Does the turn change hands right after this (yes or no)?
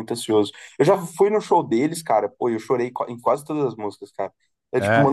no